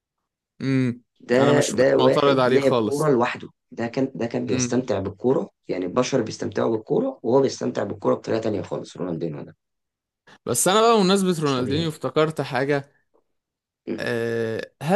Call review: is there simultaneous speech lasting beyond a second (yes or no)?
yes